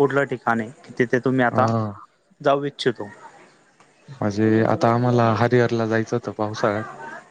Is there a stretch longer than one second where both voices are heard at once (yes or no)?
no